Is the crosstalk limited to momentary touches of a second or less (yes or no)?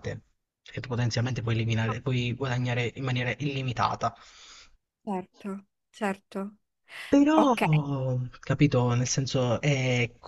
yes